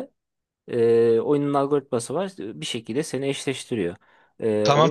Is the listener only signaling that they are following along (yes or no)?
no